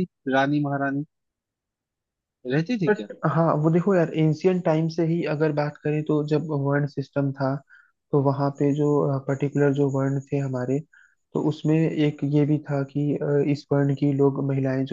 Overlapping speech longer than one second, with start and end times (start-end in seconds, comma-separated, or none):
none